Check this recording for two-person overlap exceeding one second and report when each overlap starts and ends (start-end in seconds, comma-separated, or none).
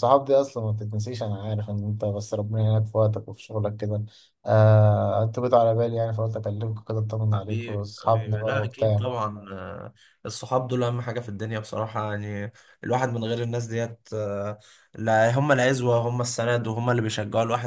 7.3-9.1